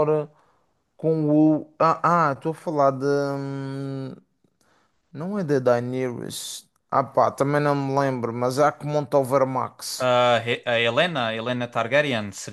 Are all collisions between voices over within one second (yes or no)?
yes